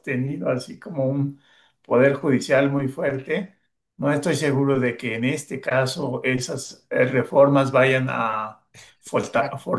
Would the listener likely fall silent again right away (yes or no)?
yes